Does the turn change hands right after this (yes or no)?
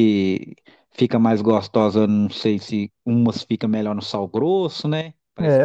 yes